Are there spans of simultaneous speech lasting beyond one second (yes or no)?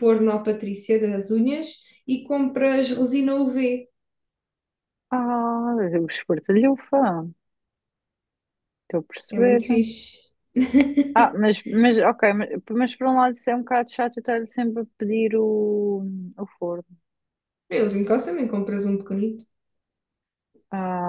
no